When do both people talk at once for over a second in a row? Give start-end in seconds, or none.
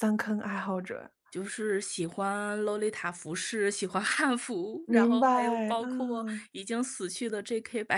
4.9-6.5